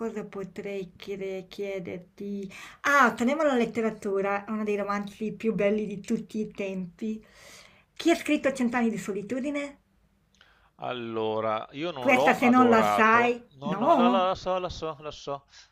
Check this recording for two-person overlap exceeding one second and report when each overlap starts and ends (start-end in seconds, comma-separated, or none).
12.0-14.3